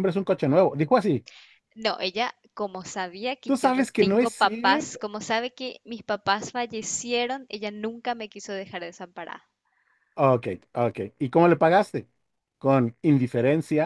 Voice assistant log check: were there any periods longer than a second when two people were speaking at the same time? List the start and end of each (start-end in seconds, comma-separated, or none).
3.4-5.0